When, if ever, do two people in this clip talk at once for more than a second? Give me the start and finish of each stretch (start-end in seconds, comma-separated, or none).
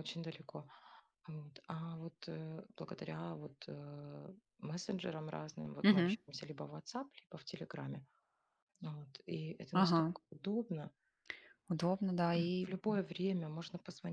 none